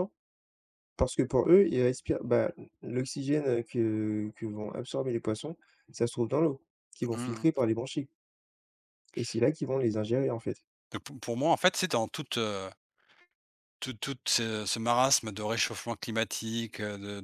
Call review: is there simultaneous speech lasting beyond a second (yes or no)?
no